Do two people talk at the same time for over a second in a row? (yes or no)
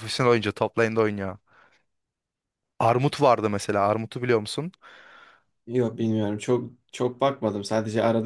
no